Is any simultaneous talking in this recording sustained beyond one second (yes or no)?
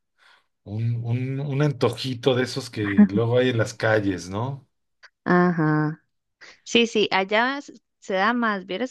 no